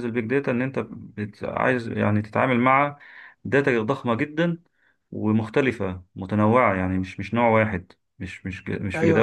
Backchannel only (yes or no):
yes